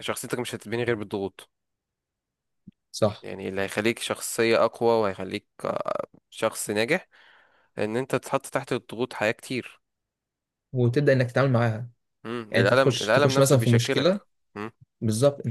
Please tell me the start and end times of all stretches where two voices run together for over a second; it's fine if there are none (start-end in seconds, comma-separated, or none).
12.5-14.2